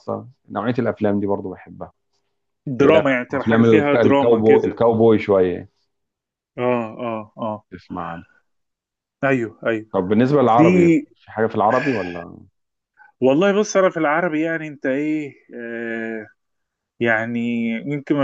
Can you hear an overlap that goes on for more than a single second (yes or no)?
yes